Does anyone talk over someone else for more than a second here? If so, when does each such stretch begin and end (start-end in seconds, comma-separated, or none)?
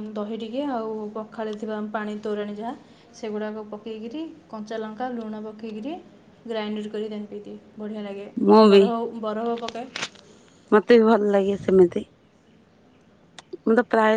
none